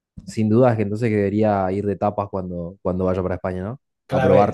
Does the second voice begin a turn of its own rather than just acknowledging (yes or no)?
yes